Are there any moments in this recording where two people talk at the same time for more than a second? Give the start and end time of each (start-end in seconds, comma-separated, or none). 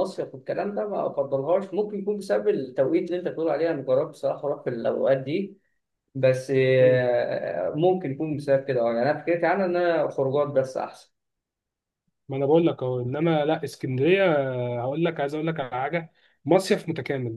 none